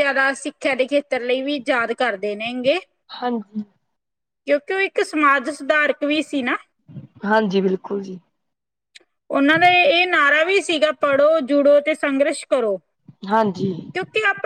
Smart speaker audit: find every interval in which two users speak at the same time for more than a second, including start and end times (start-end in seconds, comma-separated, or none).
none